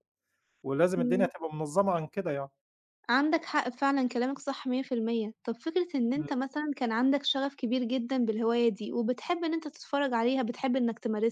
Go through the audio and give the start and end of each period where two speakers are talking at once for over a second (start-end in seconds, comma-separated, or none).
none